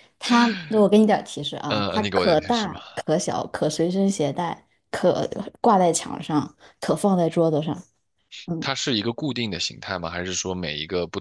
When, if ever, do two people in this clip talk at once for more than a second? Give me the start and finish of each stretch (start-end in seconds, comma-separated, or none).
1.7-3.0